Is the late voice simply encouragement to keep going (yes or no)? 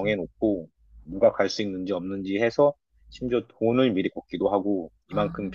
yes